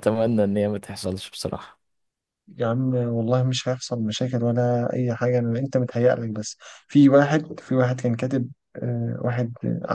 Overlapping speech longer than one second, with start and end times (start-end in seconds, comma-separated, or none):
none